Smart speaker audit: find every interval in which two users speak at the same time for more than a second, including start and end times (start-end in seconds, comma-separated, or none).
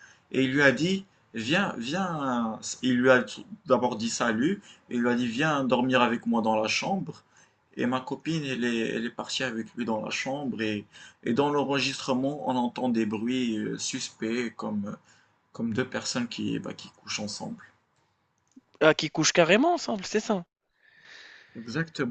none